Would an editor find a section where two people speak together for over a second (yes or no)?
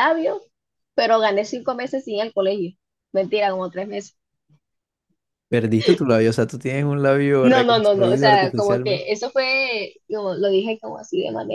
yes